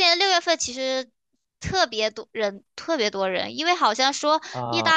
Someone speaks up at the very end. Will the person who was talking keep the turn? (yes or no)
yes